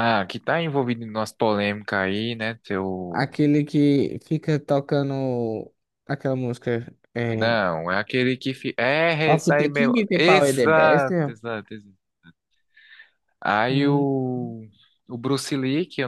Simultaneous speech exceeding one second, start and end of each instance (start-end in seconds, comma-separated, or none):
9.2-11.3